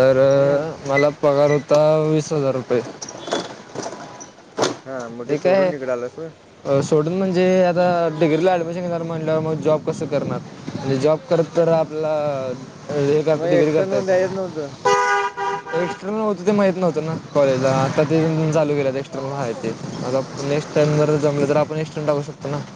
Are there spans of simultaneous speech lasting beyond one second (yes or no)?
yes